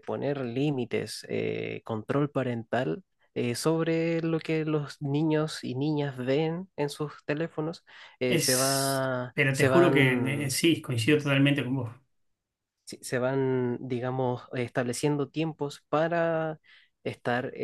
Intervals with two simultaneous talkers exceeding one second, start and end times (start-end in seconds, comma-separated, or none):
8.3-10.6